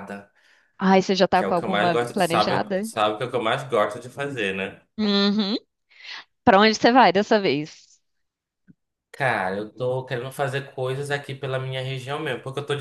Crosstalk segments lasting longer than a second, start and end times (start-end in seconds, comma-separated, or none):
1.3-2.9